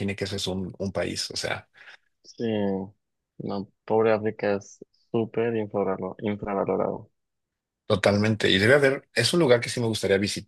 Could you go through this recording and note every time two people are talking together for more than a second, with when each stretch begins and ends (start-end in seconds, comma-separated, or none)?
none